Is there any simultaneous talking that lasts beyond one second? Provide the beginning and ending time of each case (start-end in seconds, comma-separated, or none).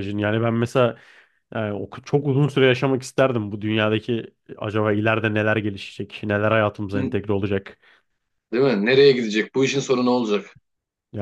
none